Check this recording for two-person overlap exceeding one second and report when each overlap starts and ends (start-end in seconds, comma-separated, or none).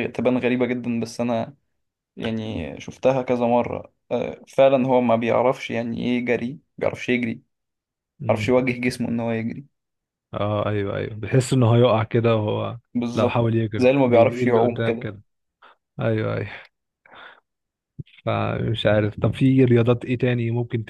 13.1-15.1